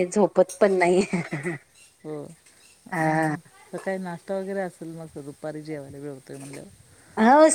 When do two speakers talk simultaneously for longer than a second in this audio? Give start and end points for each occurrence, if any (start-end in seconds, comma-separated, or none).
none